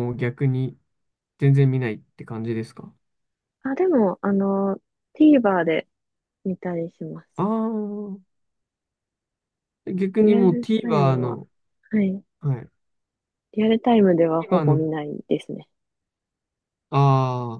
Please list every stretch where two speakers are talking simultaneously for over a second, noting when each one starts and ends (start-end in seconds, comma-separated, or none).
10.2-11.4